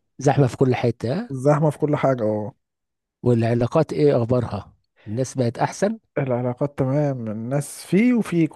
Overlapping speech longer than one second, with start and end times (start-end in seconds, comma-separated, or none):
none